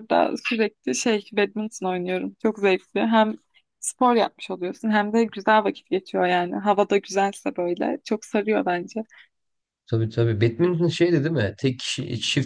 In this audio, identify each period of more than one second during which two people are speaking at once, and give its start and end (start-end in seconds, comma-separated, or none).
none